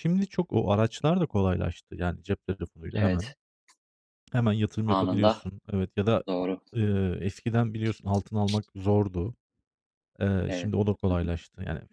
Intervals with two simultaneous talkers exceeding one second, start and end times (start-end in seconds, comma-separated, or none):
none